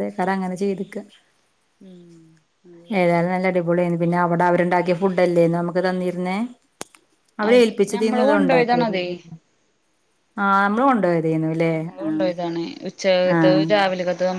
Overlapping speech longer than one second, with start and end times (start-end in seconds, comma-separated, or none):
7.5-9.1